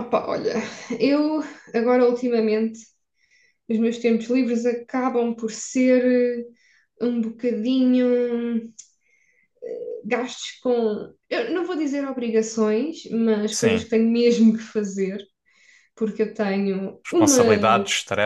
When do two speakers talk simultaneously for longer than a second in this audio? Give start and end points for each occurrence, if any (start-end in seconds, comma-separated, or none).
none